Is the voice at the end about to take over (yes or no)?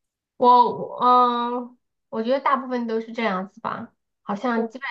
no